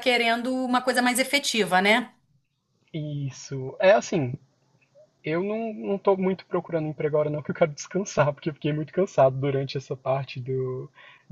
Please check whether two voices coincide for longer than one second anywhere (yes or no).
no